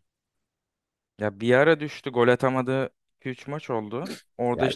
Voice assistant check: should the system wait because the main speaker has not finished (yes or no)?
yes